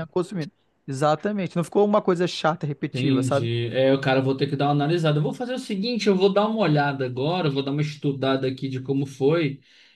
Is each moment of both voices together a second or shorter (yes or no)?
yes